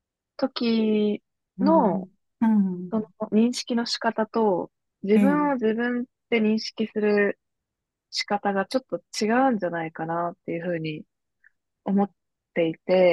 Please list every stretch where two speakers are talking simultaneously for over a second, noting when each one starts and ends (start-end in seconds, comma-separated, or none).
none